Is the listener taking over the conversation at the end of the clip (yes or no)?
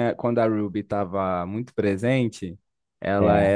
no